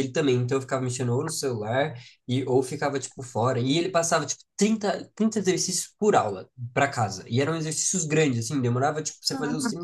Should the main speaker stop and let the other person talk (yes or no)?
no